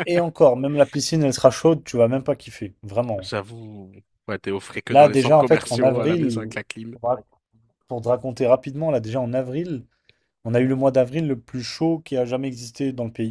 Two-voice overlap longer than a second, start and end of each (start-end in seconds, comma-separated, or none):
4.9-6.5